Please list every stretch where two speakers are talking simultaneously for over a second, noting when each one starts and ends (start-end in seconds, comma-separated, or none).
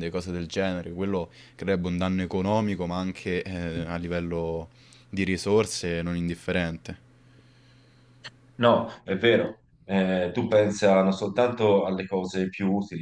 none